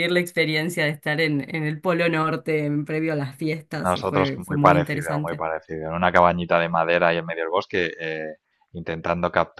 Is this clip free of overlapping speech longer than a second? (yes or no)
no